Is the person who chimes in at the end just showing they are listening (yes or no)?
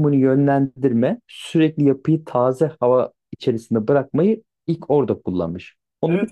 no